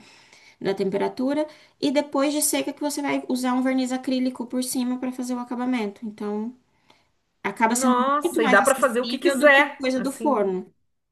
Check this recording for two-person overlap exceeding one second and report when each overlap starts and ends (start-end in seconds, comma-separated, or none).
7.7-10.5